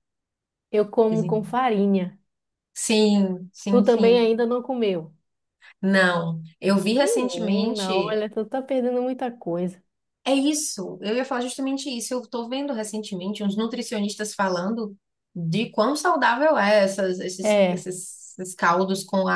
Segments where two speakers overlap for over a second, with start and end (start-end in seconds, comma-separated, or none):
7.0-8.2